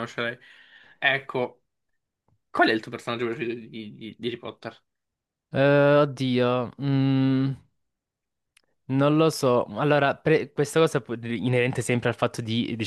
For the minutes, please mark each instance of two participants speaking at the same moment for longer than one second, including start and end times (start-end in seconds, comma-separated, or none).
none